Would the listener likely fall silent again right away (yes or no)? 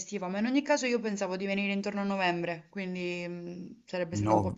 yes